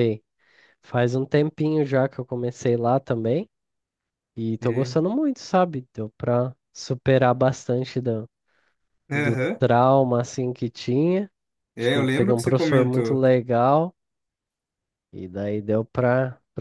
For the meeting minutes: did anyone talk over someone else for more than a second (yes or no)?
yes